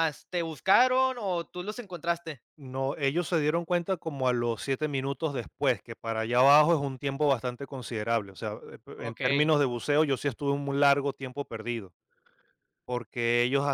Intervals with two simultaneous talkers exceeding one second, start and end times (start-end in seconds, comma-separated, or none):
none